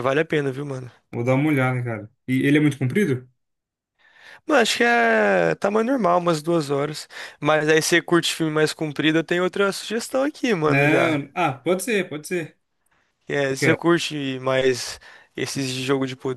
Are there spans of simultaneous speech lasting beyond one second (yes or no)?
no